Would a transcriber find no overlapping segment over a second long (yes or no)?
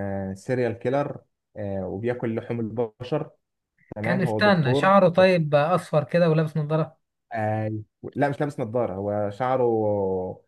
no